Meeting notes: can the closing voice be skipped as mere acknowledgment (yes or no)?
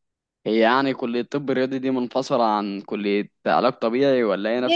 no